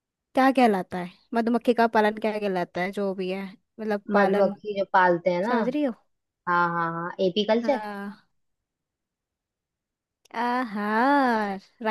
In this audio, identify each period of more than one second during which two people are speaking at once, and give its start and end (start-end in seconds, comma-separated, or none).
none